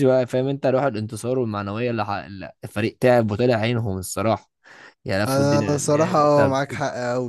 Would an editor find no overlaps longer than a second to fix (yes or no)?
no